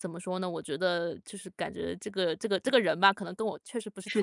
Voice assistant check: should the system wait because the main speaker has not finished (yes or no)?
no